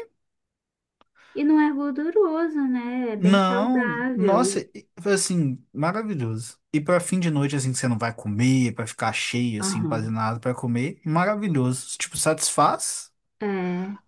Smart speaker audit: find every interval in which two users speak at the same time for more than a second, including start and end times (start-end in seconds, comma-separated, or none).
3.2-4.6